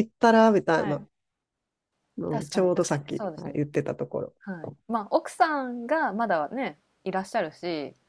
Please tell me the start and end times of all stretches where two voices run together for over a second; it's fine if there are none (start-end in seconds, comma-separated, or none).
2.3-3.6